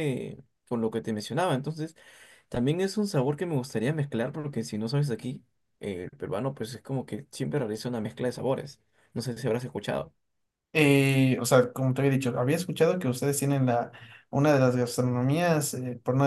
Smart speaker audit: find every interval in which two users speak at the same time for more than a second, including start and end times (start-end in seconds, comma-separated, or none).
none